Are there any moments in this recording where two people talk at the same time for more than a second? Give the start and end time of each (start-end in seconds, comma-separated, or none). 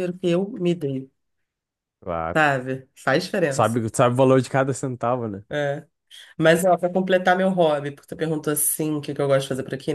none